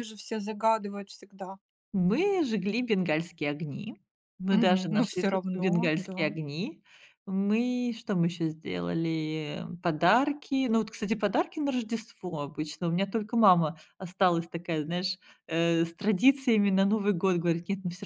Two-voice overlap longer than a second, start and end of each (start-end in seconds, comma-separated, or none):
4.5-6.3